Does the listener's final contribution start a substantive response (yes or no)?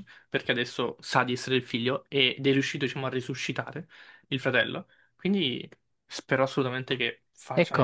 yes